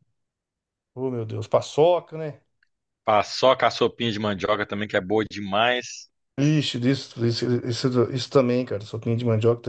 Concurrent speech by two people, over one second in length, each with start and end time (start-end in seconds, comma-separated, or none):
none